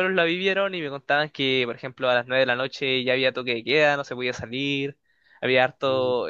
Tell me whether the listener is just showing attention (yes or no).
yes